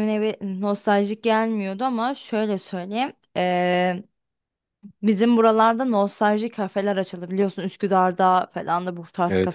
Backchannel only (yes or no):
yes